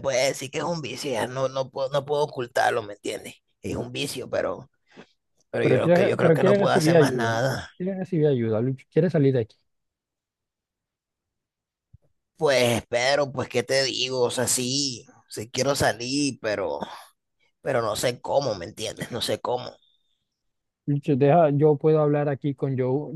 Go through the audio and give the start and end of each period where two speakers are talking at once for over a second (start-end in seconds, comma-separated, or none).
5.6-7.4